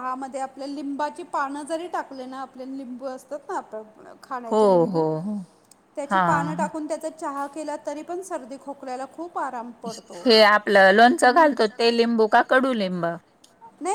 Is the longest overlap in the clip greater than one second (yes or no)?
no